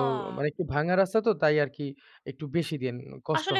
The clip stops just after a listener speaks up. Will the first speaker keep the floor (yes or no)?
no